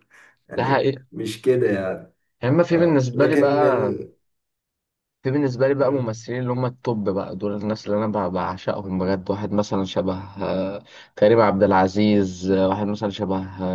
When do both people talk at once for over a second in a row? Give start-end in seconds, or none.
2.7-4.0